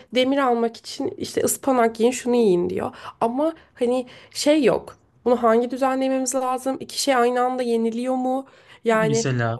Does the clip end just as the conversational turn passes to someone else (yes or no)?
no